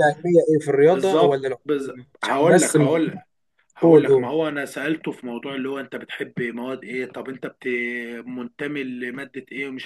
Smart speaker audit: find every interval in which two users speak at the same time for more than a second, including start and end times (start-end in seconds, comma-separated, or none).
0.9-3.0